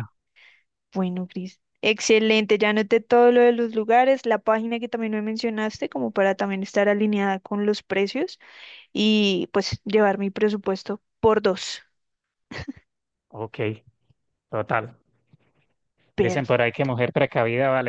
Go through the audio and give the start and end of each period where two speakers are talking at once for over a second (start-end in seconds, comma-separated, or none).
none